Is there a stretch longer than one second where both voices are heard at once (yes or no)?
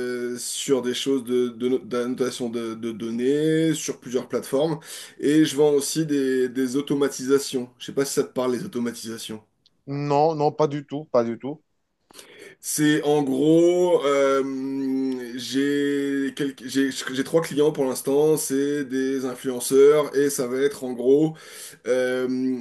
no